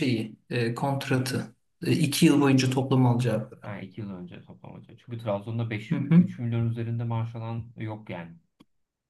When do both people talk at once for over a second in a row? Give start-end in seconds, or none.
none